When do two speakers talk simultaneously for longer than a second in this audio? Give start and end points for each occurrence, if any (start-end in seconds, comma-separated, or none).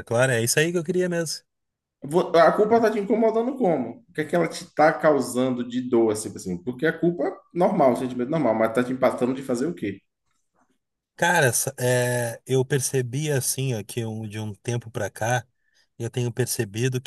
none